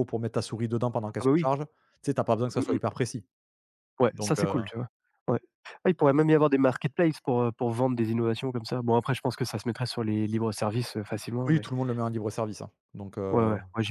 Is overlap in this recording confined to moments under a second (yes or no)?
yes